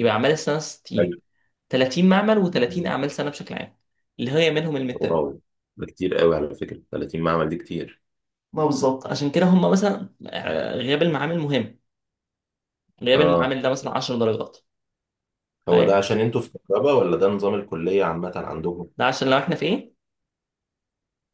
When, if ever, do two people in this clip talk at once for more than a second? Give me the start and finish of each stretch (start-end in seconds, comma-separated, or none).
none